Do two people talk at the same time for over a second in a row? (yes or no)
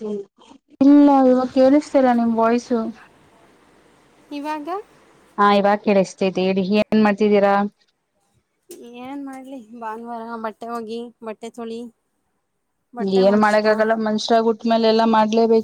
no